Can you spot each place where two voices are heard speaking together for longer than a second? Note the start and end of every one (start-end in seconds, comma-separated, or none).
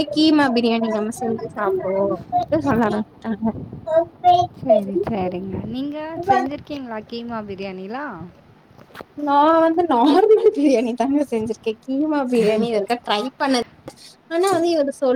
none